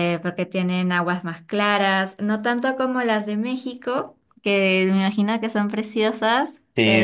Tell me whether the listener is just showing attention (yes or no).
no